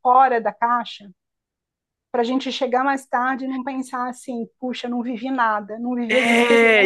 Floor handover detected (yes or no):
yes